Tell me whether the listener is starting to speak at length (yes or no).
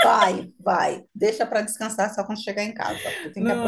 yes